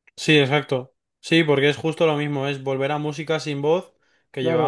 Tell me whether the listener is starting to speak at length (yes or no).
yes